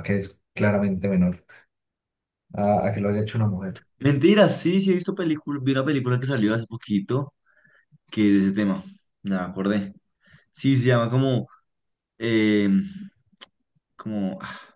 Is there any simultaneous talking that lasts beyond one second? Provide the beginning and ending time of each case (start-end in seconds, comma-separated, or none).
none